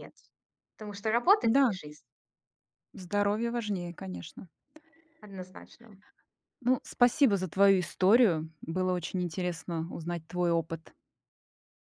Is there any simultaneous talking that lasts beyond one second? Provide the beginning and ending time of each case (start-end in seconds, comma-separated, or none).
none